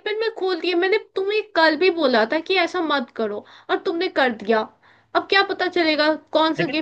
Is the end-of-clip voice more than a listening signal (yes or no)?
no